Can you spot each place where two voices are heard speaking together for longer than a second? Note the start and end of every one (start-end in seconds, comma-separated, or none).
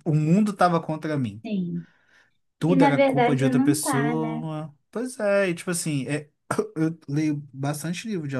2.7-4.4